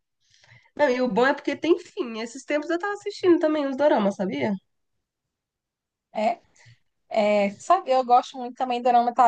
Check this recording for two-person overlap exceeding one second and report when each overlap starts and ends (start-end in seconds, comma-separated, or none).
none